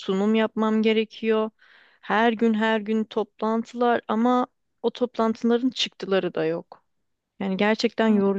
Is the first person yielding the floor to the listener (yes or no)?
yes